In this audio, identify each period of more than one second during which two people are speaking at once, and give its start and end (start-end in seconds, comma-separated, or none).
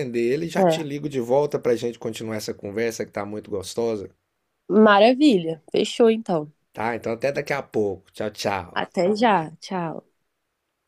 none